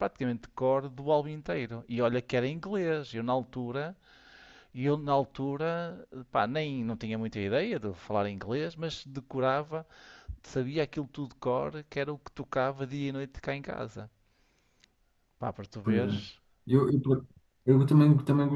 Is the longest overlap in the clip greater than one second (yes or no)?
no